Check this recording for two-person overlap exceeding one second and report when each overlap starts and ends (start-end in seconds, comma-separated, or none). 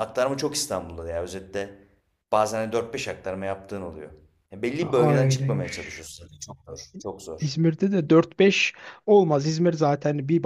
4.8-6.1